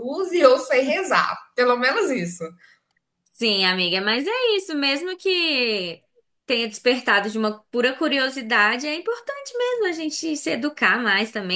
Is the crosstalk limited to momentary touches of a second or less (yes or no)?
yes